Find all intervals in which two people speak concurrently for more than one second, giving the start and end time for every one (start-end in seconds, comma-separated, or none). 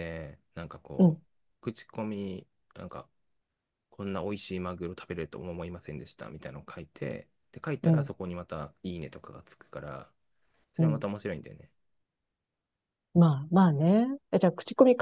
none